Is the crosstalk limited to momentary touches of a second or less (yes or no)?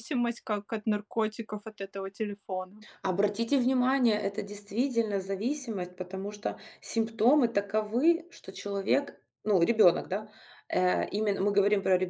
yes